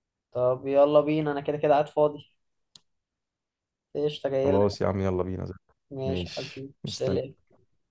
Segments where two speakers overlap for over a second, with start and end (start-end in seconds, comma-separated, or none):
6.0-7.3